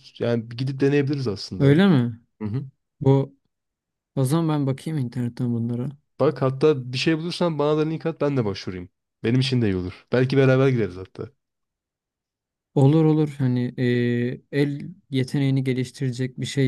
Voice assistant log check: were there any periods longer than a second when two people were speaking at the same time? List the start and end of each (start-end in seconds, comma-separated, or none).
none